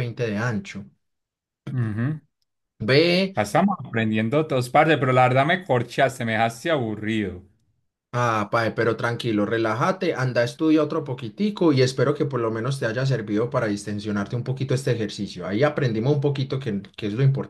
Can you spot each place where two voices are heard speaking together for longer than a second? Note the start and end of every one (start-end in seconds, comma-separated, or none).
none